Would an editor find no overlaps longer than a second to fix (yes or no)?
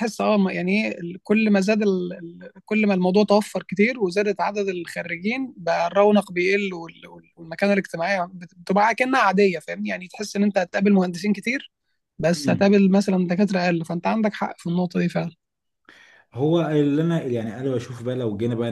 yes